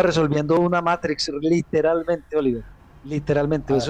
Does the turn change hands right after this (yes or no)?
no